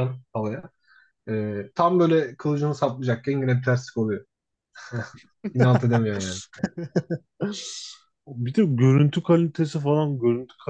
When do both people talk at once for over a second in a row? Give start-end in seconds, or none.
none